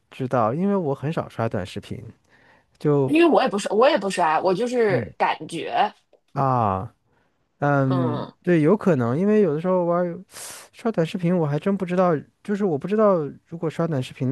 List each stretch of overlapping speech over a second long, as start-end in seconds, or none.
none